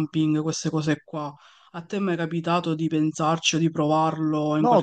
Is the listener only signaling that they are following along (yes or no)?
no